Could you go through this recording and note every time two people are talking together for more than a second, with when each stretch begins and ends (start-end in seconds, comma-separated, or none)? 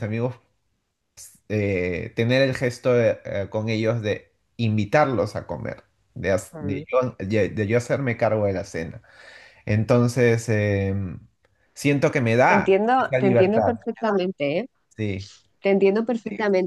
12.5-13.8